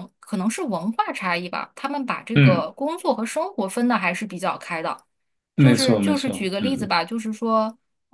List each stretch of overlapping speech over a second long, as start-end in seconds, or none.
5.6-7.0